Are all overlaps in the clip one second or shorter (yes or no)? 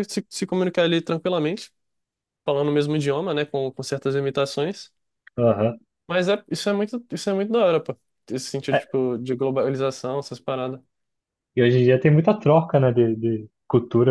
yes